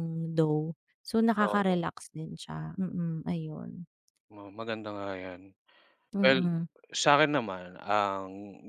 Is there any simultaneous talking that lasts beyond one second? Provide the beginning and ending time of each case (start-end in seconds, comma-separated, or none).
none